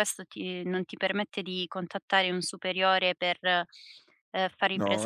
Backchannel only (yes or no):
no